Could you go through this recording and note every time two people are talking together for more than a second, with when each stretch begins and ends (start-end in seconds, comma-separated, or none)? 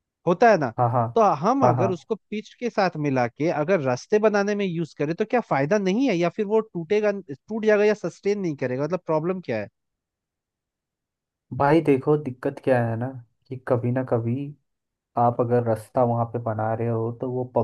none